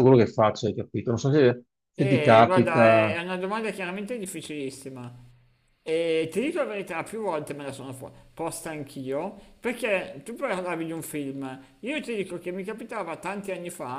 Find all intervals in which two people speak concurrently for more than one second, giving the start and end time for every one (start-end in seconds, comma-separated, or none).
2.0-3.2